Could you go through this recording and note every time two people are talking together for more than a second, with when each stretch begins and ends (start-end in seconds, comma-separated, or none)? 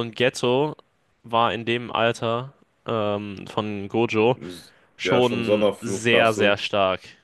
5.0-6.6